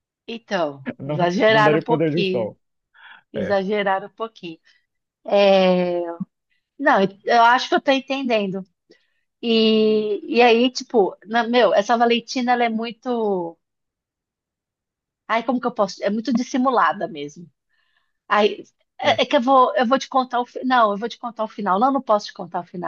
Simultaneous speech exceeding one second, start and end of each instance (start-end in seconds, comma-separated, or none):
1.0-2.5